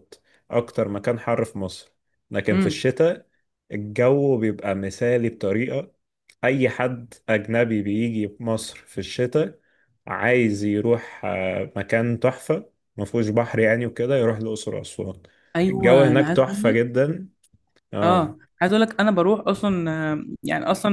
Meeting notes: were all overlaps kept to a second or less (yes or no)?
no